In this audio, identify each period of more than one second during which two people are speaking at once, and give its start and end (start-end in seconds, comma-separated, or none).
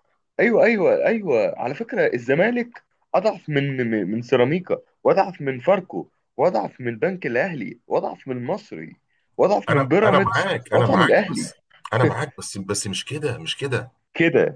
9.7-11.5